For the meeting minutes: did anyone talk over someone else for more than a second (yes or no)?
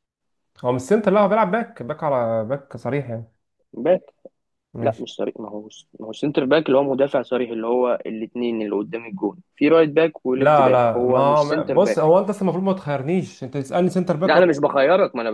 yes